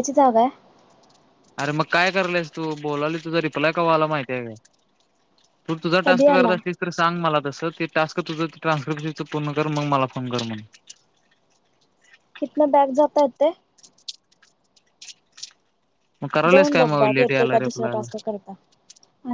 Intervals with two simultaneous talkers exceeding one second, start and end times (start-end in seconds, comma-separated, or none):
16.5-18.0